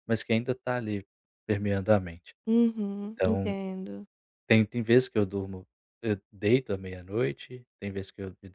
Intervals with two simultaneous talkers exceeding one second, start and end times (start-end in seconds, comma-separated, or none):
none